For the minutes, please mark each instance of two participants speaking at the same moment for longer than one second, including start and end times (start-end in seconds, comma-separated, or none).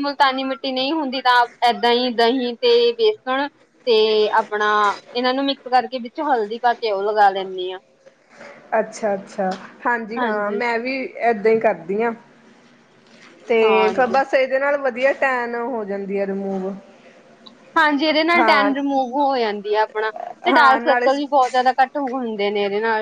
none